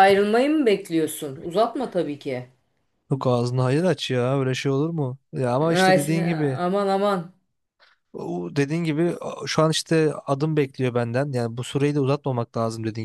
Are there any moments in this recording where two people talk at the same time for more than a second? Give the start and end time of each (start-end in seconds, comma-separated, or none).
none